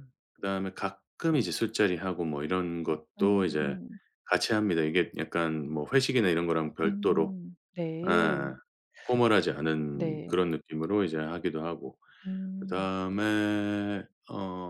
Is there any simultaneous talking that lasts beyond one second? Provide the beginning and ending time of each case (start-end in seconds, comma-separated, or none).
none